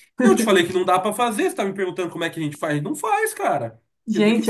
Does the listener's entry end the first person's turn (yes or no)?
yes